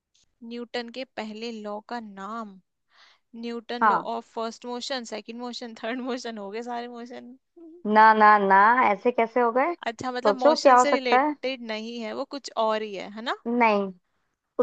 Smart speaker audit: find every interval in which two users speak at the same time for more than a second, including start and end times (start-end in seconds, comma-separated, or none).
9.9-11.3